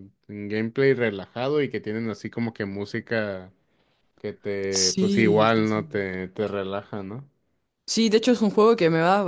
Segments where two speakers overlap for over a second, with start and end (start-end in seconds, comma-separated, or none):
4.7-6.1